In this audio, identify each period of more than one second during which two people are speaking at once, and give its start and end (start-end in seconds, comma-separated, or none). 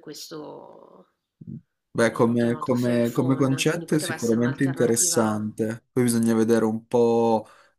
2.1-5.5